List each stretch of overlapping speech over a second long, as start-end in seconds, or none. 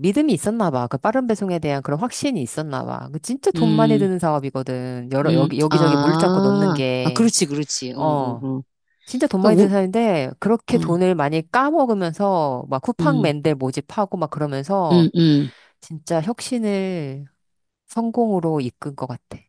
5.2-7.3